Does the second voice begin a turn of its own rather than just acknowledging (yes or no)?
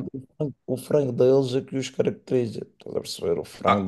yes